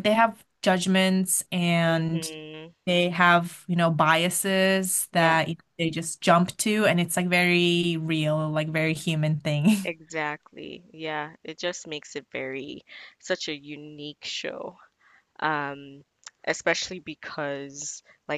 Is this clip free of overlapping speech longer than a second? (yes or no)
yes